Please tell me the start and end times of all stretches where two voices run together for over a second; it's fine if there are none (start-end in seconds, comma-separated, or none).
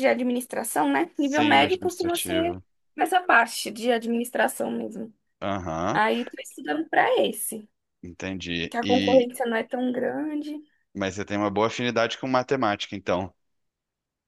1.2-2.5